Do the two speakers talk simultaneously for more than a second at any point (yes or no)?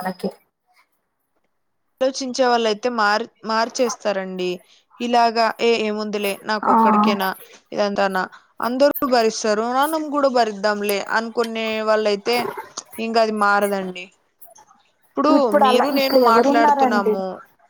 yes